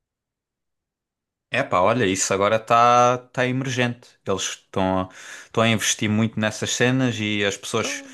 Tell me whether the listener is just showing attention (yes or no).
yes